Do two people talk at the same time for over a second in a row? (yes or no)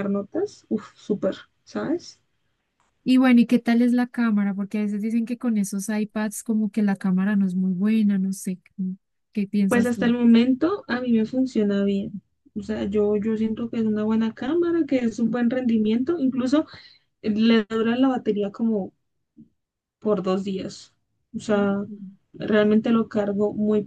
no